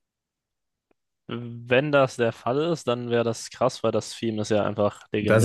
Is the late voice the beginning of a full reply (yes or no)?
yes